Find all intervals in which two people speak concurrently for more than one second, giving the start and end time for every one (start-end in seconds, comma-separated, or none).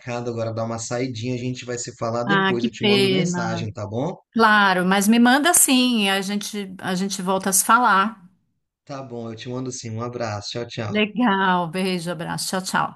2.3-3.7